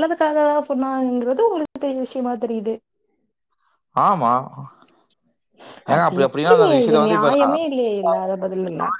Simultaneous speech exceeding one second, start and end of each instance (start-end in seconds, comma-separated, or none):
5.9-7.5